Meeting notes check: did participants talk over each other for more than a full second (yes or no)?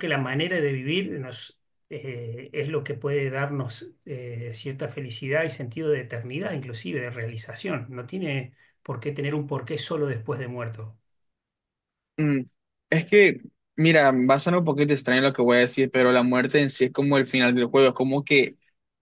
no